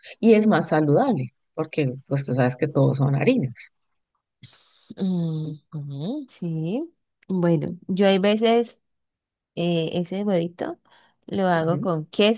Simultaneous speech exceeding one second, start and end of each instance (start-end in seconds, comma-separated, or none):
none